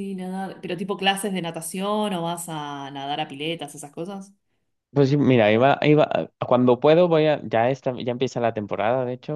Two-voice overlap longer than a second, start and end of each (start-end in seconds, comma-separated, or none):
none